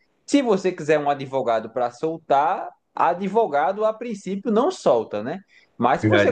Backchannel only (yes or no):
yes